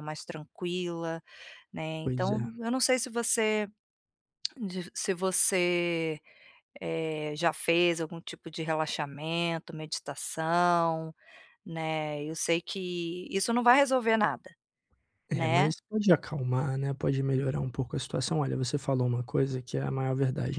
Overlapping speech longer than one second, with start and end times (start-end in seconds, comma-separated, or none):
none